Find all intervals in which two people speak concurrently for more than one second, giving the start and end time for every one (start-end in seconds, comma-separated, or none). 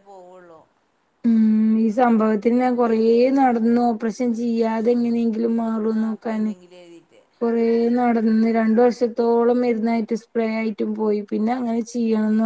none